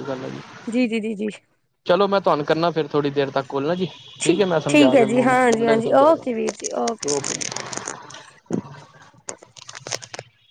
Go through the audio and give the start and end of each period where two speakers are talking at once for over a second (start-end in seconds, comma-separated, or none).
4.7-7.0